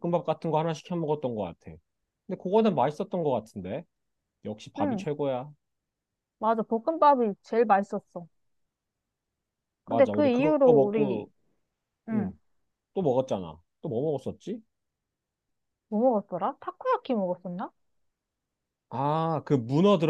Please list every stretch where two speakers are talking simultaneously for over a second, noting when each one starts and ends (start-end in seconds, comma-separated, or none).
9.9-11.3